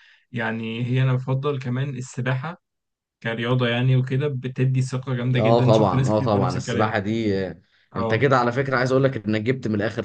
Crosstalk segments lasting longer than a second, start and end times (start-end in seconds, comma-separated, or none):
5.4-6.9